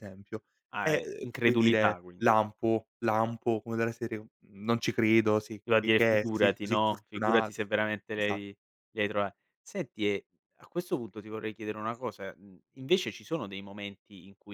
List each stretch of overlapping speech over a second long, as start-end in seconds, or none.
0.8-2.3, 5.6-7.5